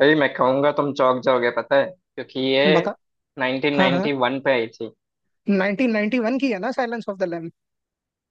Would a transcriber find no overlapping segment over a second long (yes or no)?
yes